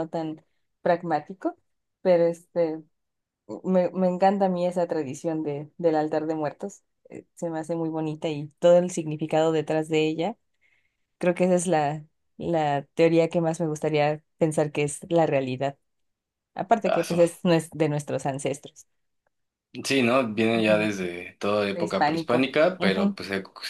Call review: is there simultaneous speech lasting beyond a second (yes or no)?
yes